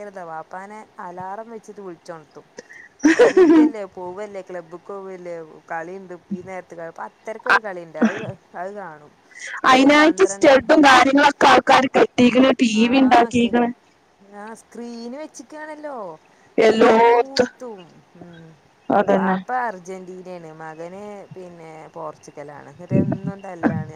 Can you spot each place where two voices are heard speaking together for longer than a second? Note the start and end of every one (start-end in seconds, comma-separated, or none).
9.7-11.0